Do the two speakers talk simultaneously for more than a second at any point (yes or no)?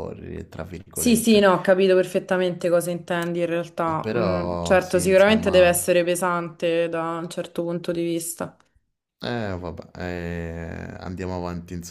yes